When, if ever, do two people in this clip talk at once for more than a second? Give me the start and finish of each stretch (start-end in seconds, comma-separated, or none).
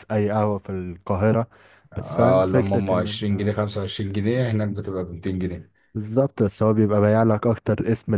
2.0-3.5